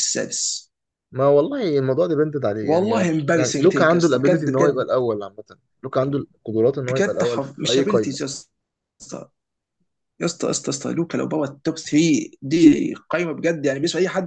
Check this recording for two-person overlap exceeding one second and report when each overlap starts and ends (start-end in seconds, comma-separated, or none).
2.6-4.9, 6.9-8.2